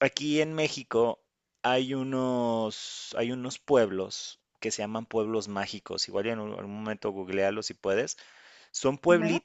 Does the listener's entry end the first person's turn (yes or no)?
no